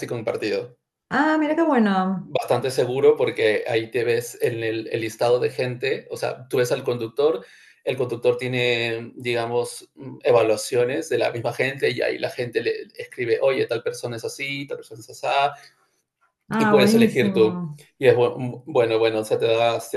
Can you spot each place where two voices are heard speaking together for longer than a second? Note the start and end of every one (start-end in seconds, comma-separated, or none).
16.6-17.8